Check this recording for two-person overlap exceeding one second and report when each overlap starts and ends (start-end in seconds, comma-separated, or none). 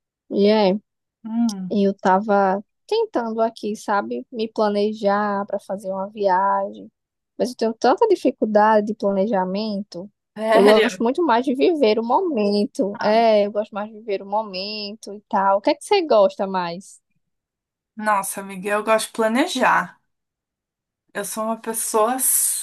none